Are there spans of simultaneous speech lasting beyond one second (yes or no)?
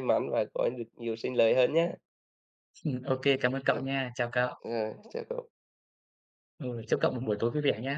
no